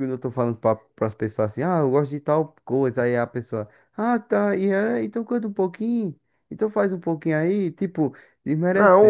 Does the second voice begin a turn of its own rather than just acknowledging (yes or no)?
yes